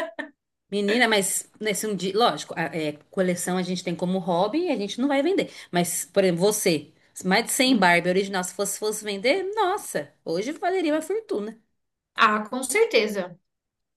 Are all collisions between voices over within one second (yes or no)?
yes